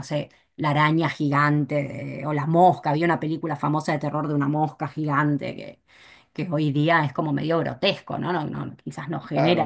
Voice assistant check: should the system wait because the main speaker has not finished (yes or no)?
no